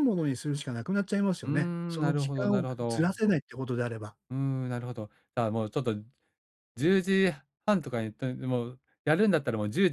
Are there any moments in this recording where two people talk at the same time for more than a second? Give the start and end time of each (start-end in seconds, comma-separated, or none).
1.4-3.2